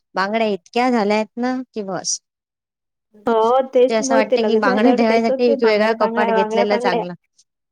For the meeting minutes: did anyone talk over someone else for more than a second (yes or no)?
yes